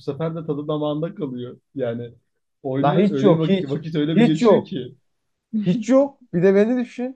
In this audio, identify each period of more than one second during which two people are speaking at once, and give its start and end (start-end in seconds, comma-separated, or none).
2.8-4.7